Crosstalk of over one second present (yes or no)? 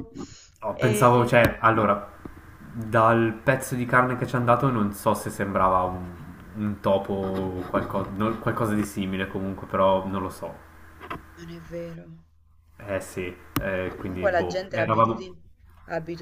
yes